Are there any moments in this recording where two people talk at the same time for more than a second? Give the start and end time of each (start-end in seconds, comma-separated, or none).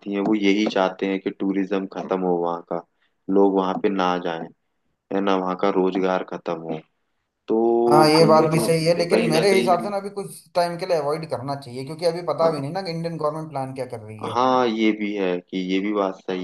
7.9-9.9